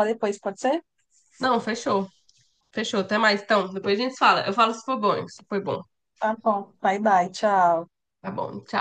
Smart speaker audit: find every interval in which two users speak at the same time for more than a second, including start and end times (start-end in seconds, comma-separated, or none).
none